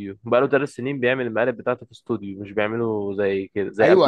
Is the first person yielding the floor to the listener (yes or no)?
yes